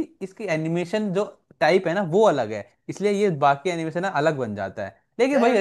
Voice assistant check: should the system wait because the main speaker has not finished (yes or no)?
yes